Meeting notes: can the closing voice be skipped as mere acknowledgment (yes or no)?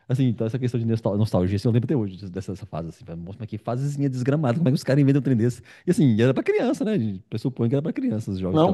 no